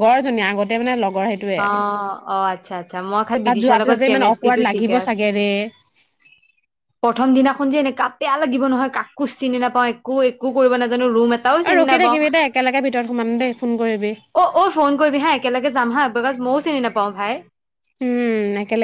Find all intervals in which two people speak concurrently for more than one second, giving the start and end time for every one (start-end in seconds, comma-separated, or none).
3.5-5.2